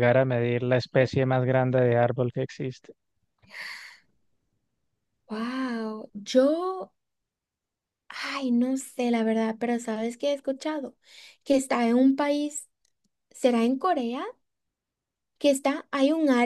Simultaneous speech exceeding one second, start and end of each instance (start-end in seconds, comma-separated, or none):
none